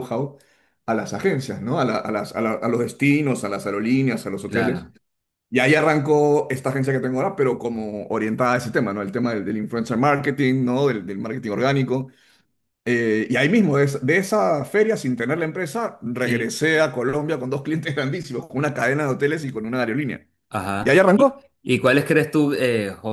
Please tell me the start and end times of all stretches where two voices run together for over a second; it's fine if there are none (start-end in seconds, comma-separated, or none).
none